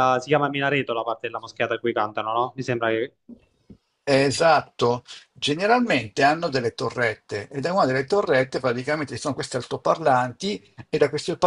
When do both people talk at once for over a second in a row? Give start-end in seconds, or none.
none